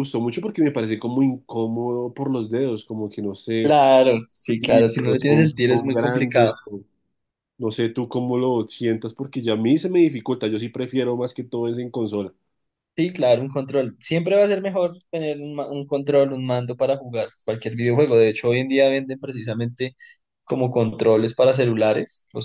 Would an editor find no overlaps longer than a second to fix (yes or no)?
no